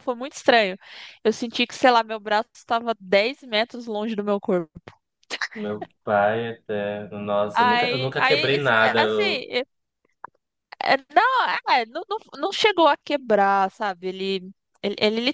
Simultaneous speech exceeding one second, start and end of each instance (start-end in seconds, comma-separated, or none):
7.5-9.4